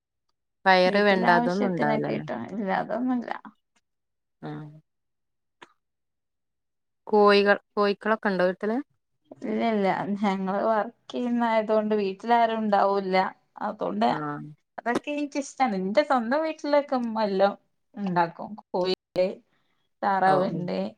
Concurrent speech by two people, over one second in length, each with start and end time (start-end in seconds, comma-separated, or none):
0.9-2.2